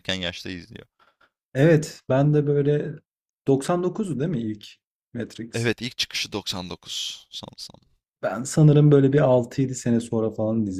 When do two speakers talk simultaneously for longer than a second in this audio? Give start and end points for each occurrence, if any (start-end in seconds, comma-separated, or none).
none